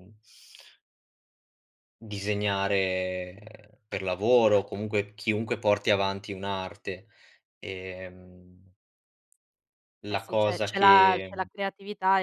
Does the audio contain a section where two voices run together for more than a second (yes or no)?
yes